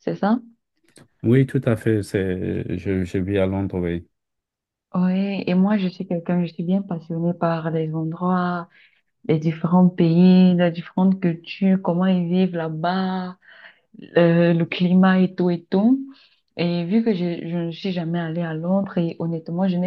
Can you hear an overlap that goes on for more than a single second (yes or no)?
no